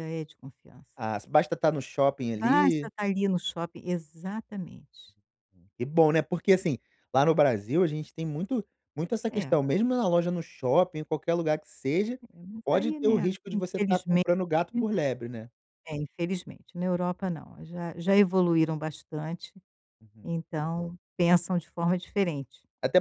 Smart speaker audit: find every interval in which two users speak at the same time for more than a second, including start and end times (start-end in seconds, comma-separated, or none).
12.7-14.3